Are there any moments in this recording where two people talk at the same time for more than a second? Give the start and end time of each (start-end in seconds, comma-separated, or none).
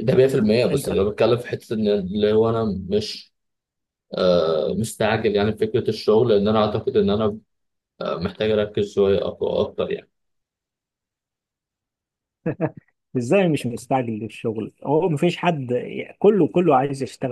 none